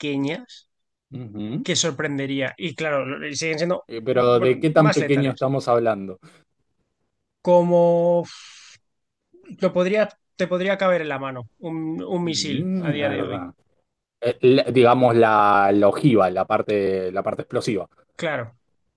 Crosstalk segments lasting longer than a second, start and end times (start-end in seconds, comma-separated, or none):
3.9-5.5, 12.2-13.5